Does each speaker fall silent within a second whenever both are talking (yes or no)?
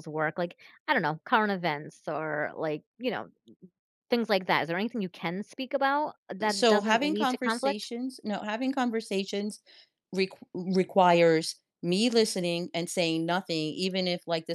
no